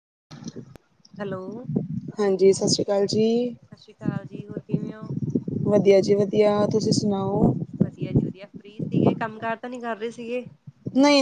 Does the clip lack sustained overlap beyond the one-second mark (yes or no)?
yes